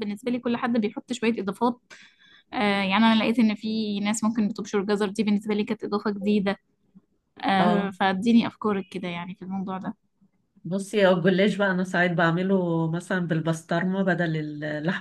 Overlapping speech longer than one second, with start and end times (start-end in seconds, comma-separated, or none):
none